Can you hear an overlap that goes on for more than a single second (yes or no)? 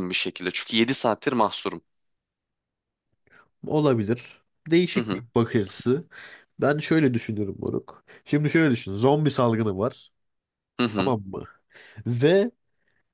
no